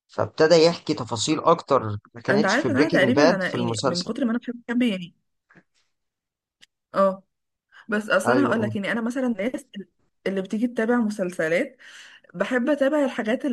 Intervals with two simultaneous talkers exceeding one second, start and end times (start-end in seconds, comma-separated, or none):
2.3-4.1